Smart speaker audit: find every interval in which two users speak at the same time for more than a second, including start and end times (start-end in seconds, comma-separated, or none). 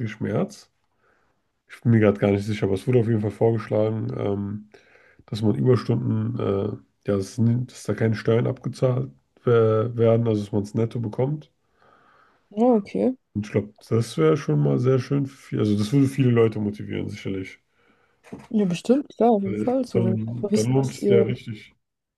19.4-21.2